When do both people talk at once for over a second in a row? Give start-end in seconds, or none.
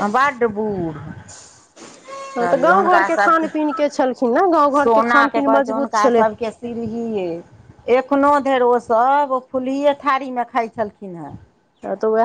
none